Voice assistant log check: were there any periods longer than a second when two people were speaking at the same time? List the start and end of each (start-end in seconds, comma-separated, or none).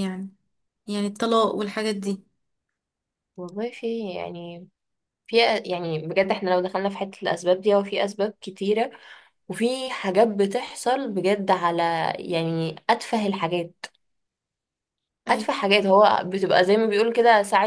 none